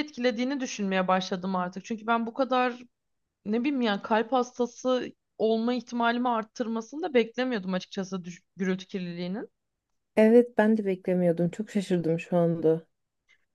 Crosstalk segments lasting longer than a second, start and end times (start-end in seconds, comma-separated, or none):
none